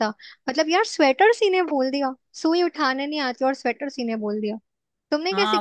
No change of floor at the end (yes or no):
no